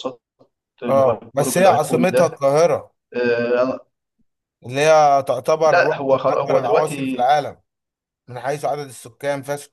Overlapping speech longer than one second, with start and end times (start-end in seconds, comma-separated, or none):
0.9-2.4, 5.7-7.3